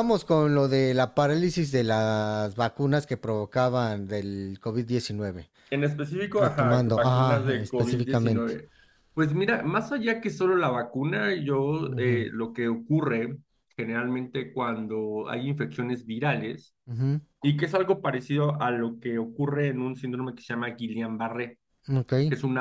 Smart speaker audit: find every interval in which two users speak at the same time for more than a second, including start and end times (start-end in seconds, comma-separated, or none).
6.4-8.5